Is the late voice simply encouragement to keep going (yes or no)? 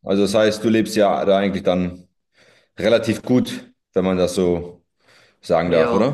no